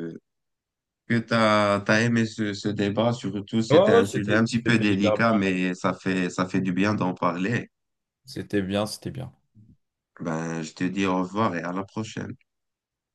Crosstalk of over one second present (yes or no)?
yes